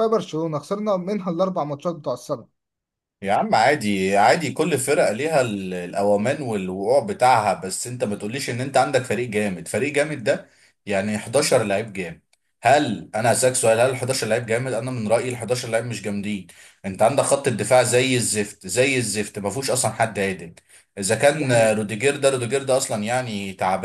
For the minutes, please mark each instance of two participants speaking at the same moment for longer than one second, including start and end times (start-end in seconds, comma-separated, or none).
none